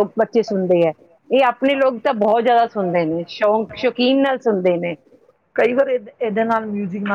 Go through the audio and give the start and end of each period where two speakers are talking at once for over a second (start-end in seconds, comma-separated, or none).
none